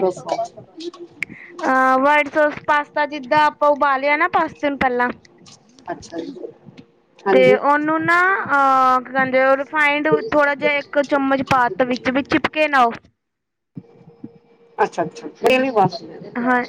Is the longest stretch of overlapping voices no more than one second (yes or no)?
yes